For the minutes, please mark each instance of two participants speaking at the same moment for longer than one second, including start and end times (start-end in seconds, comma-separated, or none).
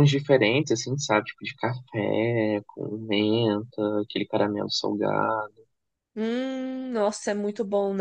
none